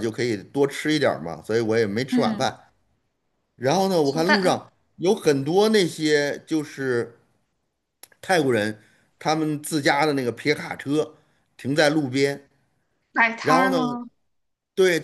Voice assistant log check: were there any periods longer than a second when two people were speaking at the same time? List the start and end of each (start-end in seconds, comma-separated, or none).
none